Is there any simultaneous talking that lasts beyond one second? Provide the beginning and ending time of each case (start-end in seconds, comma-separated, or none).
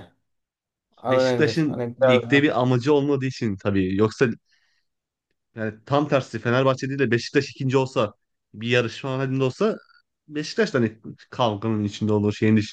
1.0-2.5